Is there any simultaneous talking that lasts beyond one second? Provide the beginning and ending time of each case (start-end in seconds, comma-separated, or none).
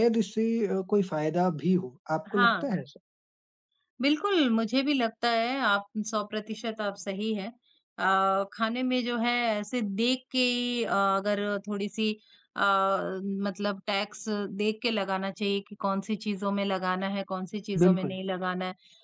none